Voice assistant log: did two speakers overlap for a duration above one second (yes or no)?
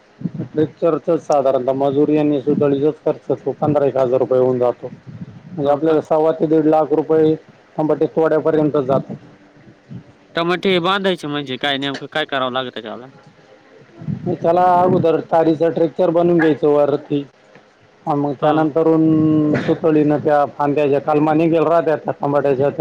no